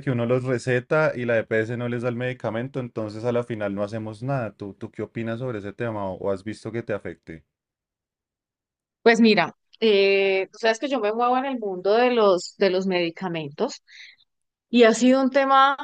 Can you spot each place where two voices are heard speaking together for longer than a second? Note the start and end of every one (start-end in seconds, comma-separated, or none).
none